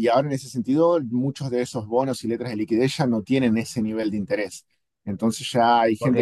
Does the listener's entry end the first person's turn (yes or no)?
yes